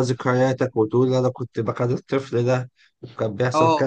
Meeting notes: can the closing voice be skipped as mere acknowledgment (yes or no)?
no